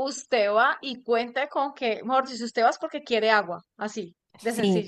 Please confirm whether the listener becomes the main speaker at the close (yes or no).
yes